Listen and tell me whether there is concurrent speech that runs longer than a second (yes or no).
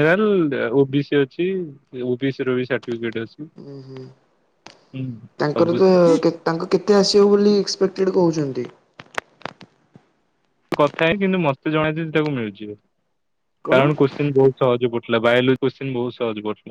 no